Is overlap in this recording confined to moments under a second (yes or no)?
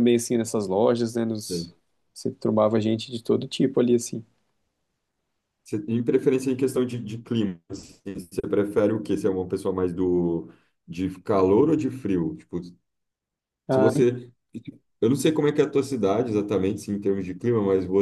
yes